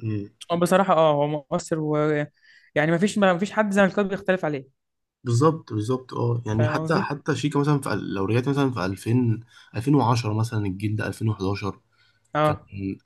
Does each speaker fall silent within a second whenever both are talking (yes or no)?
yes